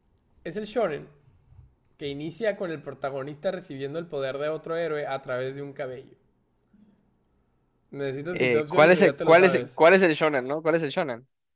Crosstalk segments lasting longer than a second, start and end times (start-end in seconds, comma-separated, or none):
8.3-9.8